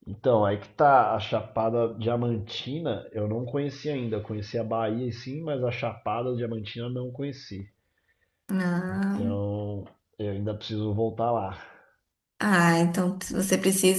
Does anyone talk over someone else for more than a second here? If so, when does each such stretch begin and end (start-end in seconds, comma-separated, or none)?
none